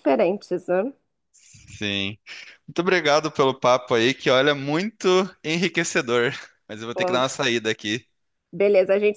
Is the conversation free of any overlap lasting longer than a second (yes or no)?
yes